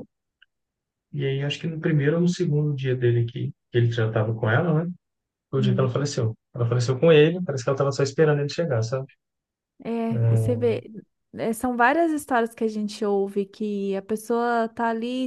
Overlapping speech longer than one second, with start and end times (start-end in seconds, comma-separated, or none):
none